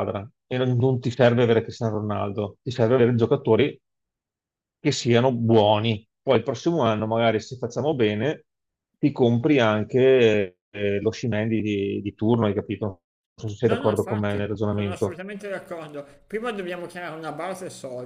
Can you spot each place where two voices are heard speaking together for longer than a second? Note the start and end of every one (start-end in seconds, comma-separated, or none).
13.6-15.2